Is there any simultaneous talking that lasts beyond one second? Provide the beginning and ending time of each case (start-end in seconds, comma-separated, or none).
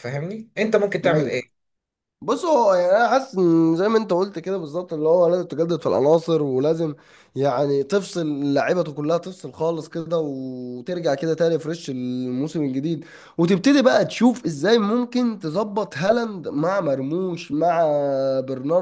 none